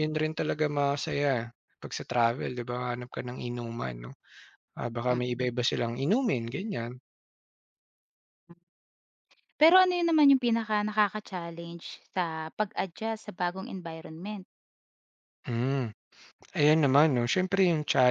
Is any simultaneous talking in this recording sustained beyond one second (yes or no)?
no